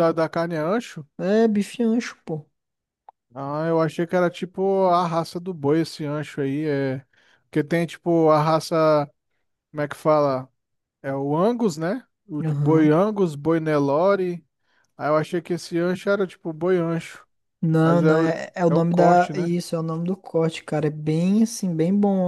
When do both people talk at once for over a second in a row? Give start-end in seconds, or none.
17.8-19.5